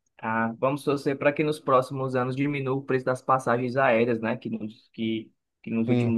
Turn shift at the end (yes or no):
no